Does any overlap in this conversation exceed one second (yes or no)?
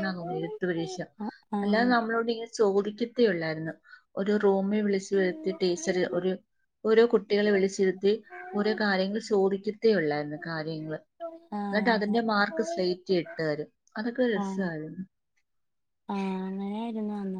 no